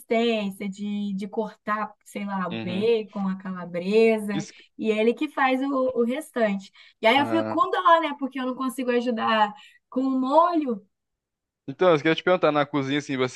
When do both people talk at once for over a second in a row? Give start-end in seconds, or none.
none